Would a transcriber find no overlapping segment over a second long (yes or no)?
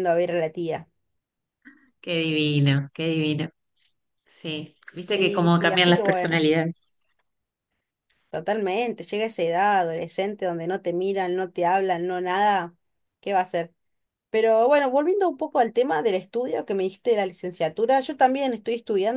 no